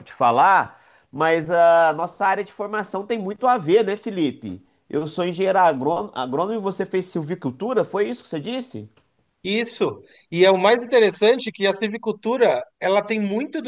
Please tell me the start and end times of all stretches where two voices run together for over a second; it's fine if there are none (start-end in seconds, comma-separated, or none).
none